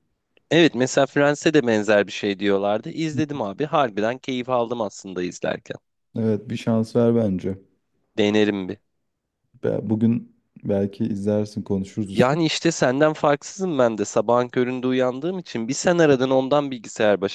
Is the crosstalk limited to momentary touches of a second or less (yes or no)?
yes